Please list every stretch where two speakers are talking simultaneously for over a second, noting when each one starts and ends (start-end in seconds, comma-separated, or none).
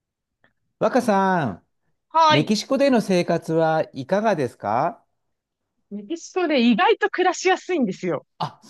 none